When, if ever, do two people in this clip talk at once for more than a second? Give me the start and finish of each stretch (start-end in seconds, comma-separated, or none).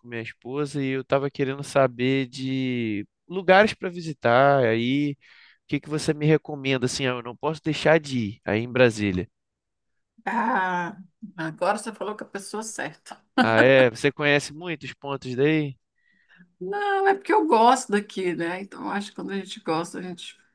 none